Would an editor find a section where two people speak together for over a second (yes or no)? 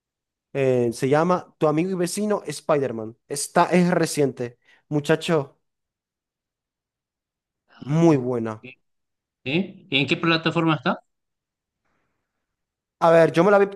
no